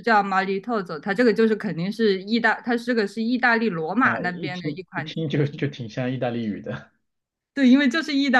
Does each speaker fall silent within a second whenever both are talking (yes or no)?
no